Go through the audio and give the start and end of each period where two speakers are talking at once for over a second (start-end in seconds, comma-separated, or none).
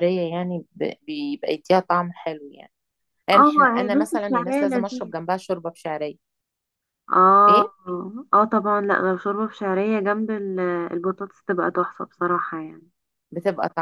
3.3-5.1